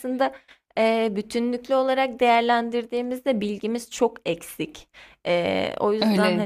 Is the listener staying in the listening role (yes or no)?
no